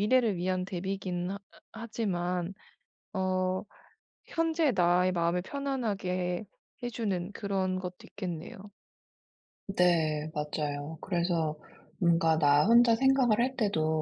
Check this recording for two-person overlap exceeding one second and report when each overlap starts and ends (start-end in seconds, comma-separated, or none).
none